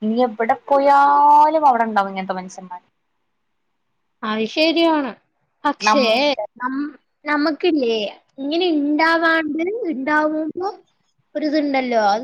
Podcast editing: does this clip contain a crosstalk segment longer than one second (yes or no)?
no